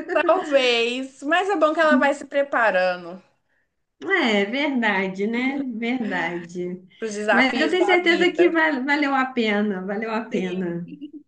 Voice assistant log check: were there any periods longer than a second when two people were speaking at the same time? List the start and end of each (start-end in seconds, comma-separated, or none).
7.3-8.5